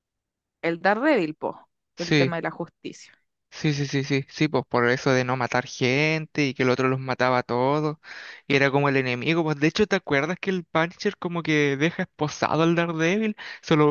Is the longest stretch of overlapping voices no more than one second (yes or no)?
yes